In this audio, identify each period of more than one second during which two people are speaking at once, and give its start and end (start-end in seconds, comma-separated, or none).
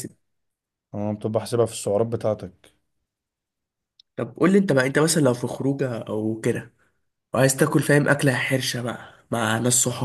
none